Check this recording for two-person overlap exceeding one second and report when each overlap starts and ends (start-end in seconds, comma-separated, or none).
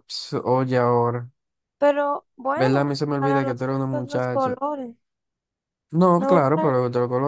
2.6-4.6